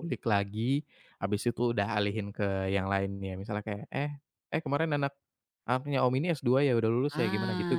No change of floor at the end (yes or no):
no